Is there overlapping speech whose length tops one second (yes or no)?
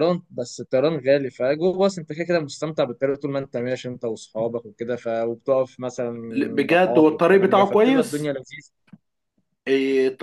yes